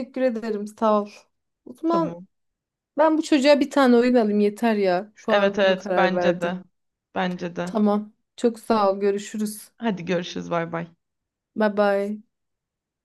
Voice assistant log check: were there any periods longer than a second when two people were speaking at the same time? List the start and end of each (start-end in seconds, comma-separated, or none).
5.3-6.5